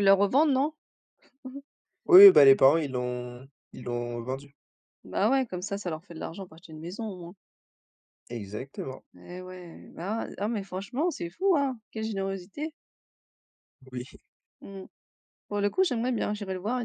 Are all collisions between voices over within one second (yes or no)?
yes